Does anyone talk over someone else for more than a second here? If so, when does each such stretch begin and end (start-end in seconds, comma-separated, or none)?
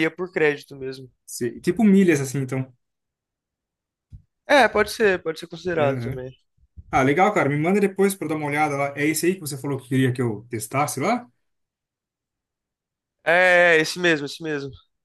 none